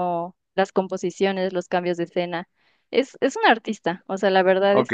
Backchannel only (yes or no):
no